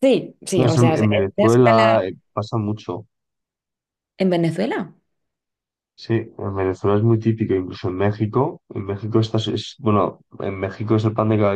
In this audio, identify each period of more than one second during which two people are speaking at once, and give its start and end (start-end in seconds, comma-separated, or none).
0.6-2.0